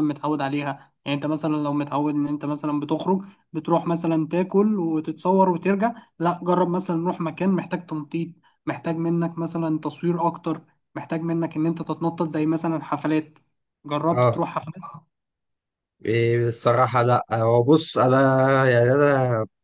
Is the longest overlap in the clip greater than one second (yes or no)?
no